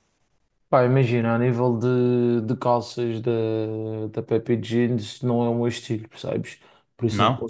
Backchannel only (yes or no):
yes